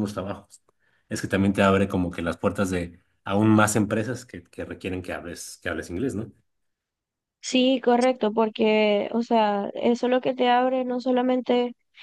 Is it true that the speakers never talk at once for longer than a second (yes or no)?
yes